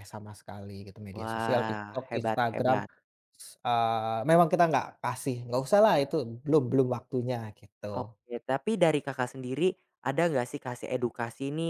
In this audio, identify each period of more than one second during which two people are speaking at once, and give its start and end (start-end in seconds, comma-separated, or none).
1.2-2.8